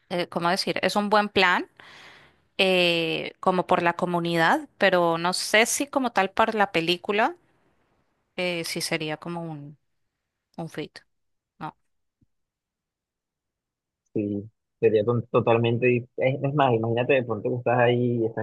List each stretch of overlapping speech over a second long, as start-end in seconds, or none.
none